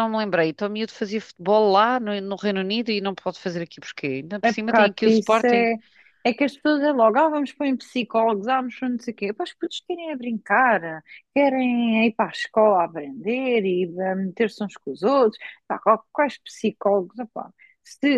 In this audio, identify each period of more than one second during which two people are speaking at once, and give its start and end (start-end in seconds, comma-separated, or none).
4.4-5.7